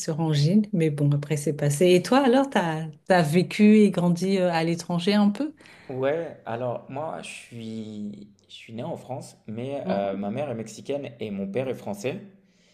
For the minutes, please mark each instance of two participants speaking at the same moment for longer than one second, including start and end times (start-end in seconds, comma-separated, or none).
none